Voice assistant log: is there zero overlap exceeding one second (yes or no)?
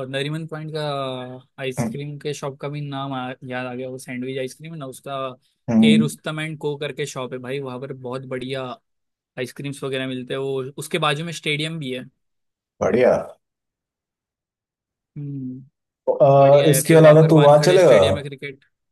no